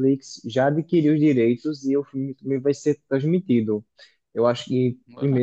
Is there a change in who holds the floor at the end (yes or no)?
no